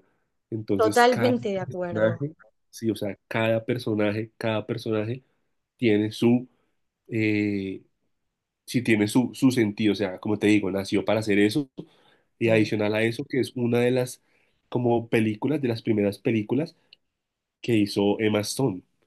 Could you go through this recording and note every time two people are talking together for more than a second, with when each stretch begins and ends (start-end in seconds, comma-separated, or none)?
0.7-2.2